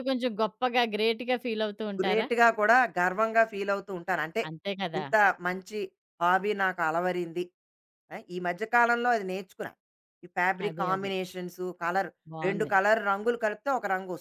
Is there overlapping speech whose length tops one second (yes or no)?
no